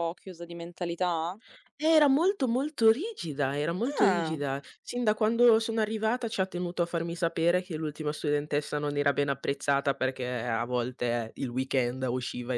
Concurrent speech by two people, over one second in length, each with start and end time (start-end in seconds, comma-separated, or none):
none